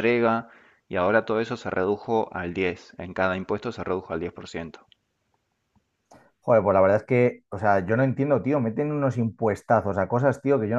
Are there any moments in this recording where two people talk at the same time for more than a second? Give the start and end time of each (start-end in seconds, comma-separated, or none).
none